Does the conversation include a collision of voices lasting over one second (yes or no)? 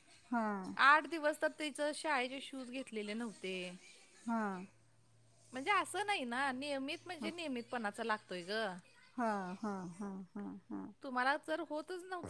no